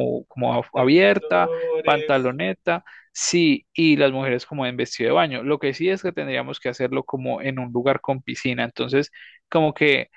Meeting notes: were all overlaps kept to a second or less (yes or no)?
no